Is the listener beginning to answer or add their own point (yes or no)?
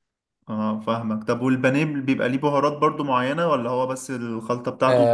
yes